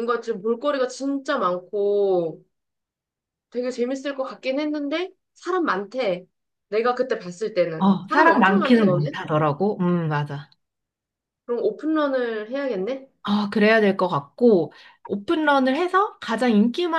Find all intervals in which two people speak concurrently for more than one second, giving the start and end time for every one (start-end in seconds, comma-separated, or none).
7.8-9.2